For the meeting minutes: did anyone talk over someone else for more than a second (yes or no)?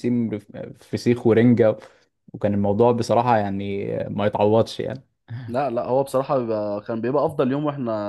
no